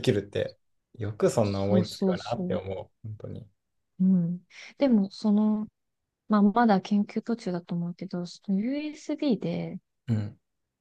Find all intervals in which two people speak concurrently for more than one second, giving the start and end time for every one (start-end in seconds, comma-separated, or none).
1.4-2.6